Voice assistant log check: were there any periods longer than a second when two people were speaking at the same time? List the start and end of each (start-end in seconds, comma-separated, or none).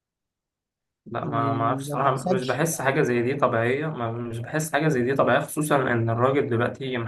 1.2-3.0